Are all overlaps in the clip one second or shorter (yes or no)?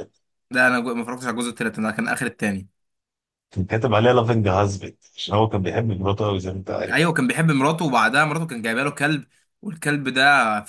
yes